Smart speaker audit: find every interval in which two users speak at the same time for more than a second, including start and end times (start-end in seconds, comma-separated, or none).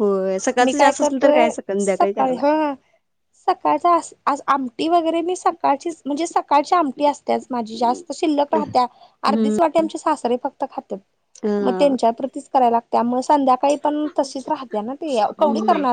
0.6-2.6